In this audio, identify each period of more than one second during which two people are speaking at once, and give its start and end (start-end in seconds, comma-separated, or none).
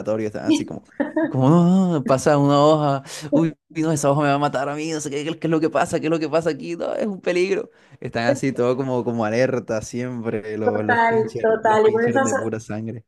10.6-12.5